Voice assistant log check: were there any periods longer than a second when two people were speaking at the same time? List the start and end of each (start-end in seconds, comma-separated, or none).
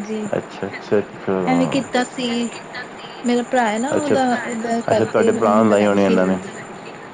4.9-6.3